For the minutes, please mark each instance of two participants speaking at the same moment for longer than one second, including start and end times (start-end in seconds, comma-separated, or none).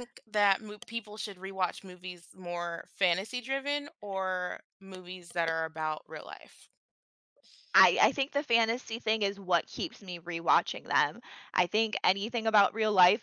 none